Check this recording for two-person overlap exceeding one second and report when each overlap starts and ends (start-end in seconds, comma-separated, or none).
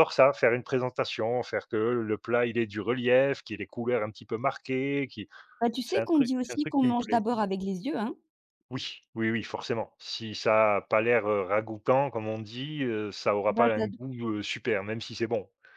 5.8-7.2